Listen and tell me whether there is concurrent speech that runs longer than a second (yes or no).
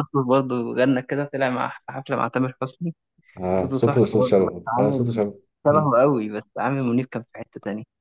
yes